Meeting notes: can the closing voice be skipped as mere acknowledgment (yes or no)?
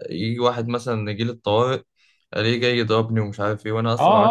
no